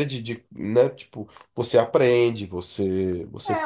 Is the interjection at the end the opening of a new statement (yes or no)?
yes